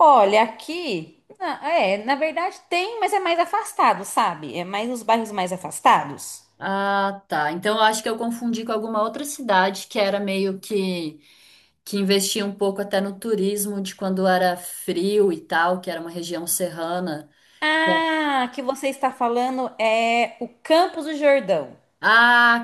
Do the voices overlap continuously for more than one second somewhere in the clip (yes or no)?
no